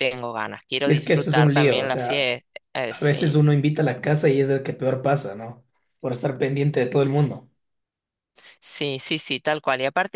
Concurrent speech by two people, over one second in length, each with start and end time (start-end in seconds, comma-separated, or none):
0.8-2.3